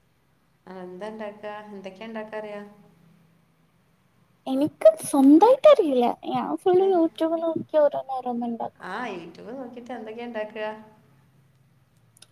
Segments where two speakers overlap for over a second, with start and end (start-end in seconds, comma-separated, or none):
none